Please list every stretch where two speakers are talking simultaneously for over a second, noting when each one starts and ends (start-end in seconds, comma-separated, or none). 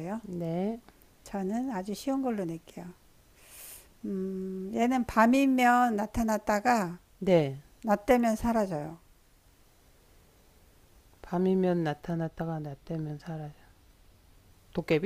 none